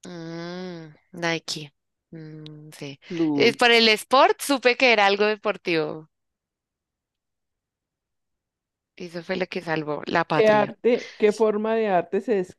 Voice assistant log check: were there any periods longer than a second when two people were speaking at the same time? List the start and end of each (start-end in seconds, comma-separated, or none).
none